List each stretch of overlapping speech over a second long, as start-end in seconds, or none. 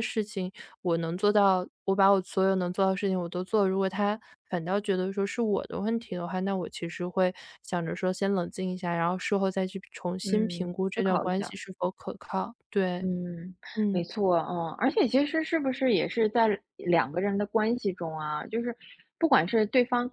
10.2-11.6